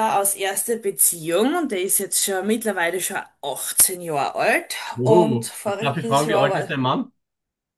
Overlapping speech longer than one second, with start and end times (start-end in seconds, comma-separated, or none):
5.0-6.7